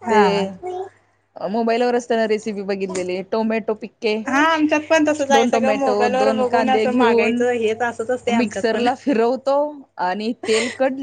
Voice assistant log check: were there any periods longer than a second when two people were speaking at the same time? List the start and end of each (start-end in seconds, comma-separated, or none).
5.3-7.4